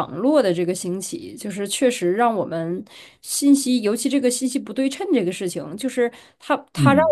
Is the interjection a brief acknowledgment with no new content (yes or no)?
yes